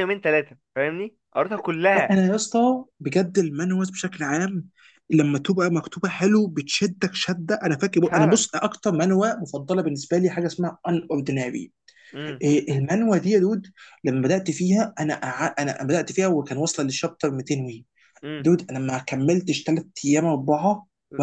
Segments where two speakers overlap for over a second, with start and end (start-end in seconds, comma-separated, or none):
none